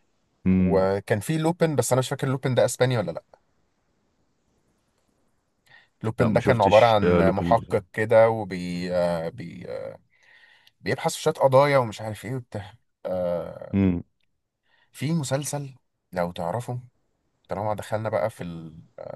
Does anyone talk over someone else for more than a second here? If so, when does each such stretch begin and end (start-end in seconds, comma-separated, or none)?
6.2-7.8